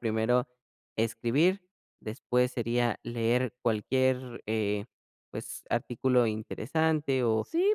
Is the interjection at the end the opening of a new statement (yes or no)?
yes